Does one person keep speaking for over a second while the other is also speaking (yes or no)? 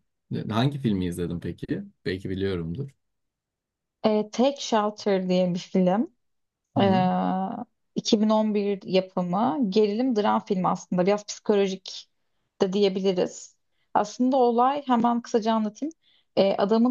no